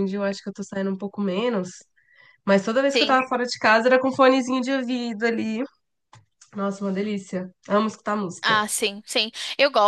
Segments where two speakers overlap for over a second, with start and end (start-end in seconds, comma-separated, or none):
none